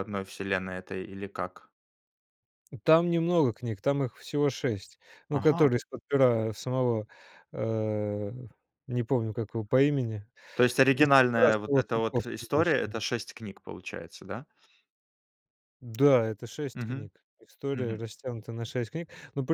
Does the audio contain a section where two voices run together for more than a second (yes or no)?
yes